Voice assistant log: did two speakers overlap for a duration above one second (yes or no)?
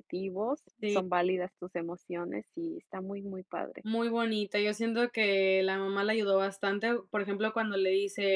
no